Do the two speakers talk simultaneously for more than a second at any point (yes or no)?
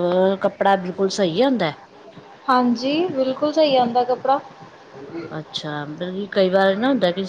no